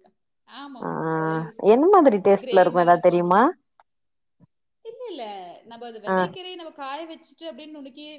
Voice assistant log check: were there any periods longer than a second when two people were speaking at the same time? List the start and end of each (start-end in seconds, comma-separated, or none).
1.7-3.4